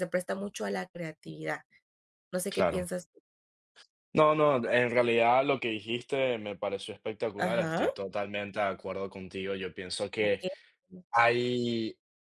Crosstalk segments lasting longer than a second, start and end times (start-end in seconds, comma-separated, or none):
none